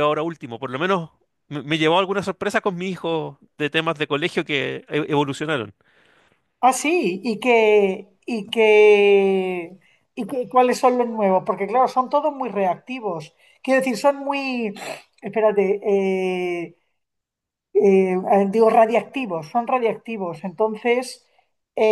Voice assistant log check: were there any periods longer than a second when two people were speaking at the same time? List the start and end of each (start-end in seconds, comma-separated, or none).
none